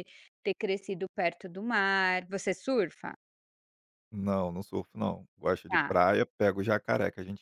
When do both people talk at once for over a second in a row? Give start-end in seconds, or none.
none